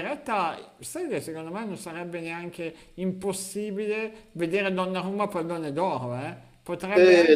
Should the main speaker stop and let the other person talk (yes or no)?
yes